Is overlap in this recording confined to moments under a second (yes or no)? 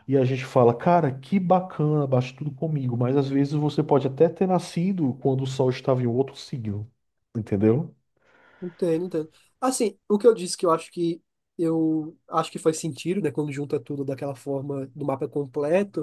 yes